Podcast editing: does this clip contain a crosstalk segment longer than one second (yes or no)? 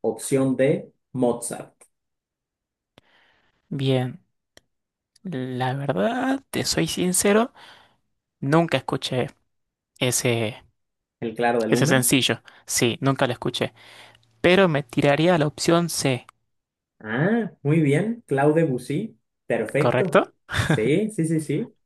no